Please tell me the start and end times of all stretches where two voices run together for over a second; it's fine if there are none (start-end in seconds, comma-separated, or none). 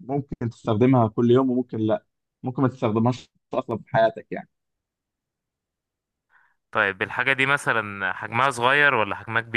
none